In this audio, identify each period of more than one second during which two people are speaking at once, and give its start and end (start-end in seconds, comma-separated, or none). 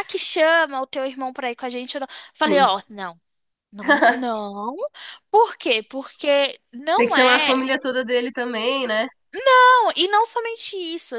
none